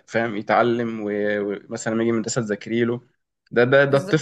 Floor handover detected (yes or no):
no